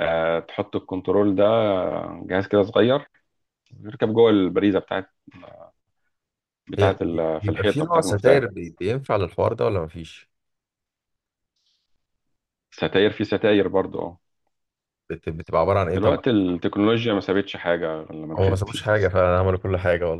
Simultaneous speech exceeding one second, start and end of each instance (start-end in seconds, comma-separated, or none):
6.8-8.4